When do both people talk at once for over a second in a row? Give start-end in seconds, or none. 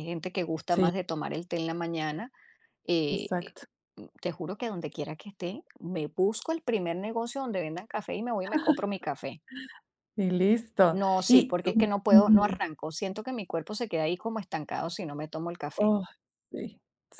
10.9-12.6